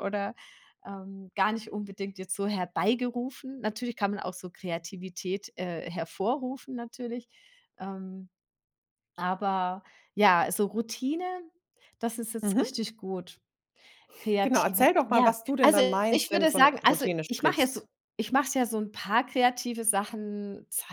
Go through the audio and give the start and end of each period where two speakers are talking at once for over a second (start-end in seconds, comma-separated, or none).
14.4-17.8